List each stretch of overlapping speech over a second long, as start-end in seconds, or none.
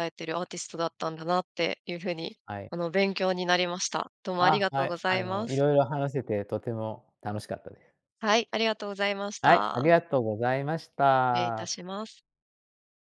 4.4-5.6